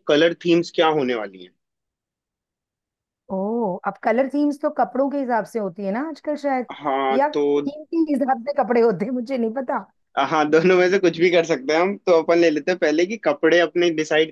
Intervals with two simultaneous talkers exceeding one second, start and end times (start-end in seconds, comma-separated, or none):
none